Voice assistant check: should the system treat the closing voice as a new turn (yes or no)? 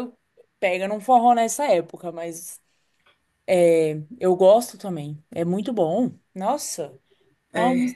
no